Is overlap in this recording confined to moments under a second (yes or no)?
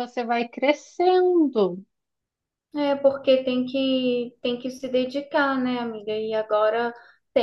yes